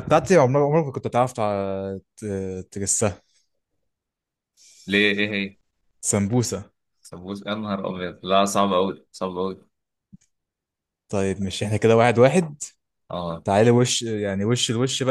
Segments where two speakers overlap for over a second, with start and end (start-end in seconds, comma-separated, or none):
none